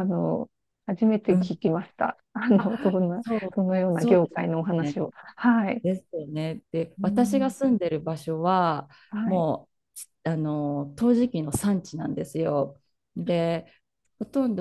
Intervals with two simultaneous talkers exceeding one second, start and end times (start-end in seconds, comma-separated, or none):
2.6-5.1